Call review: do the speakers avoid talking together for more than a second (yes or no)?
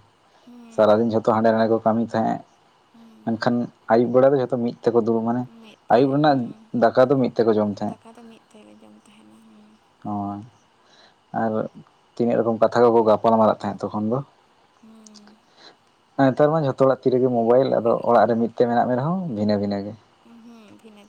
yes